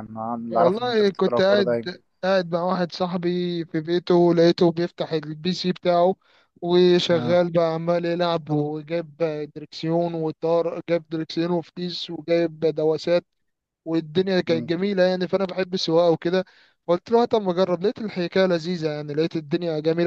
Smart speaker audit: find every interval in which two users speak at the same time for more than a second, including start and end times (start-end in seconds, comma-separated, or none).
0.5-1.9